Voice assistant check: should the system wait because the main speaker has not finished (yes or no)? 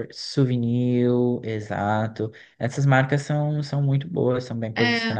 no